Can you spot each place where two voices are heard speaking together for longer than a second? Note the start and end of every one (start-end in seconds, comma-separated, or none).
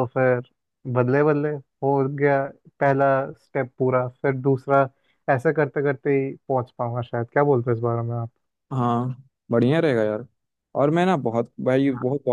none